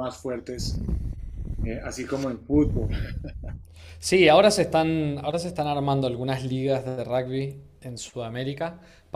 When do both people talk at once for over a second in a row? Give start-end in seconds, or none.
none